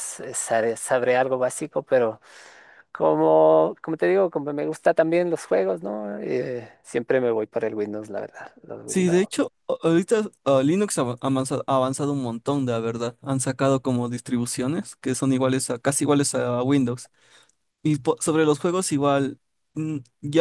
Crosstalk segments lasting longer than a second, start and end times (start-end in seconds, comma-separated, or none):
none